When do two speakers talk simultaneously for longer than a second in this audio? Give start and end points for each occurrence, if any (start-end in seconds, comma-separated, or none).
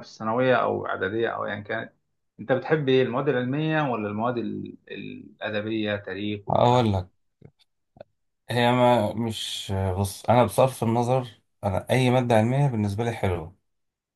none